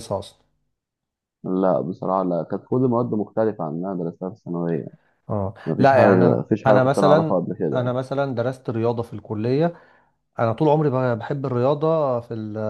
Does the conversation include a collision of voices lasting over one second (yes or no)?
yes